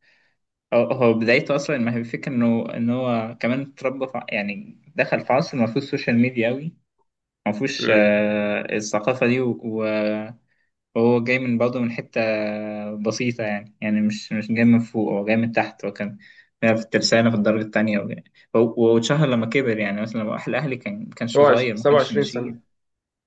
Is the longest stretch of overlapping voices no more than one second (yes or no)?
no